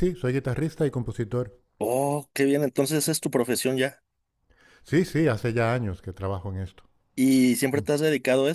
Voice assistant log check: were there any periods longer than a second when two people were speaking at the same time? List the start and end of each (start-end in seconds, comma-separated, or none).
none